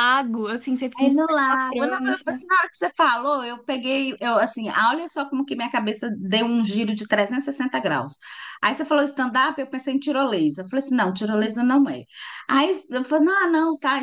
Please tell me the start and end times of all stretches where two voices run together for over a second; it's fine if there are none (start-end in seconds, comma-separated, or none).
1.0-2.4